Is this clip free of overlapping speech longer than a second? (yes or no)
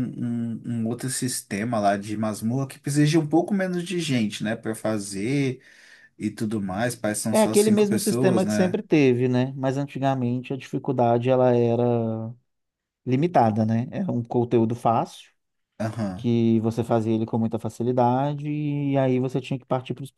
no